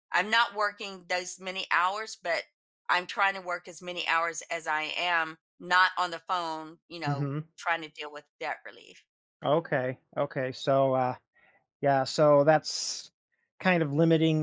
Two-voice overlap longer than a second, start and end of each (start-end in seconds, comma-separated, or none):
none